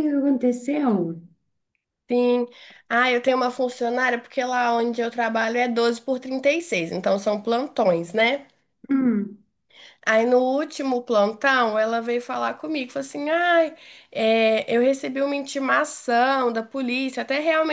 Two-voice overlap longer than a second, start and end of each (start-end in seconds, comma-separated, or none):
none